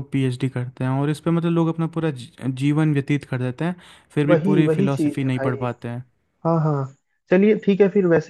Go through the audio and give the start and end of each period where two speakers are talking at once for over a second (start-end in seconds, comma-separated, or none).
4.3-5.7